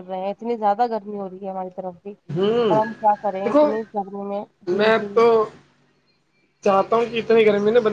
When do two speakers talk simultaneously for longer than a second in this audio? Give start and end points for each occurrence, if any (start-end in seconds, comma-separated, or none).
none